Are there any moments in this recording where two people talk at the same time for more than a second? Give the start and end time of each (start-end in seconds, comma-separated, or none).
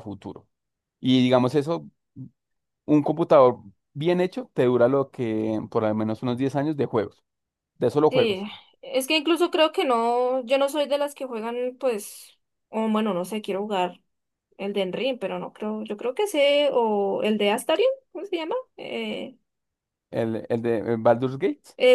none